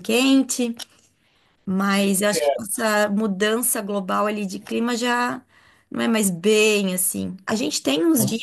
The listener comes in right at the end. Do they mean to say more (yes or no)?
no